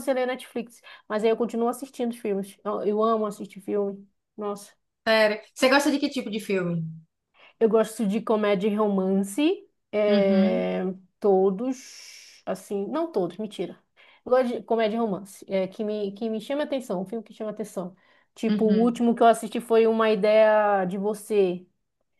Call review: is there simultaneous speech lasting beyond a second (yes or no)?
no